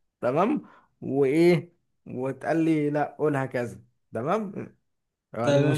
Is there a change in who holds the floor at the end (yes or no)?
yes